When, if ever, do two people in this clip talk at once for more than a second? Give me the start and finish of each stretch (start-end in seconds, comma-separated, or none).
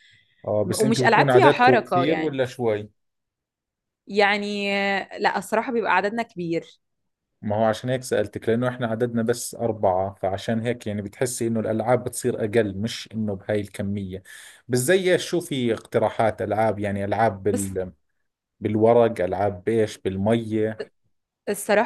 0.7-2.4